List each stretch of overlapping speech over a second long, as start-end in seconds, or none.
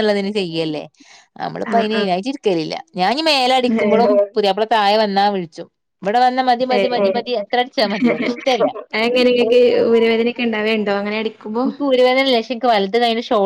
none